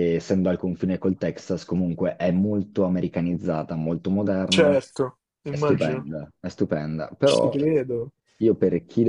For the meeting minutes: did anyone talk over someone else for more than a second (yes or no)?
no